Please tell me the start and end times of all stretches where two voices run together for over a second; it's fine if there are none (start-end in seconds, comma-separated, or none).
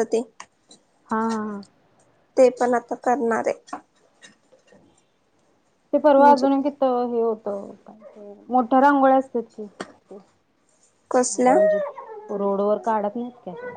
none